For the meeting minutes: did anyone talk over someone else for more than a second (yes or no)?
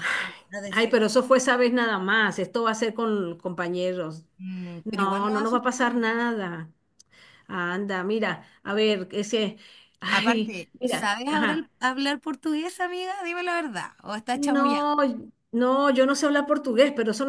yes